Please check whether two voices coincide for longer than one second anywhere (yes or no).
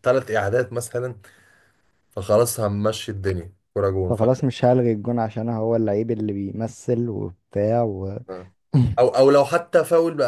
no